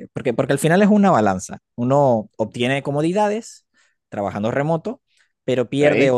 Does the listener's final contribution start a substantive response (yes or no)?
no